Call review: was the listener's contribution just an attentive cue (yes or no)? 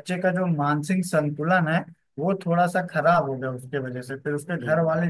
yes